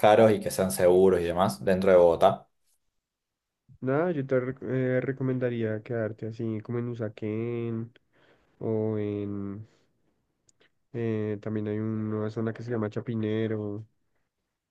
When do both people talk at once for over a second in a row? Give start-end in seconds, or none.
none